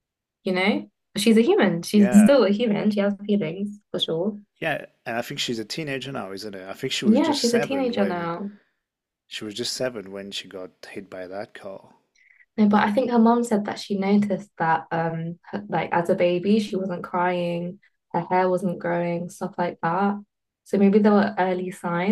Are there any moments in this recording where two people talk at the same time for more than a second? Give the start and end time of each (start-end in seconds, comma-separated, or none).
7.0-8.3